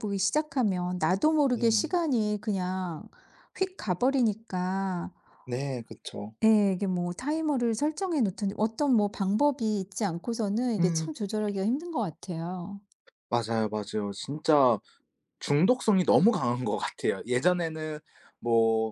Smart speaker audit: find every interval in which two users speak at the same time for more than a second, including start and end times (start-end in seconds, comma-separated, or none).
none